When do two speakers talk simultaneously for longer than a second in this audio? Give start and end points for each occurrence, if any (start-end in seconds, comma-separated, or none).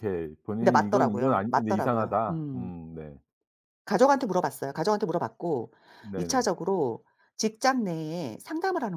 0.6-2.7